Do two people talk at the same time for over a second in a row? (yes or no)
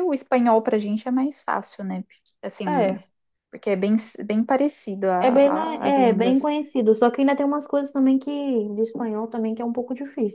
yes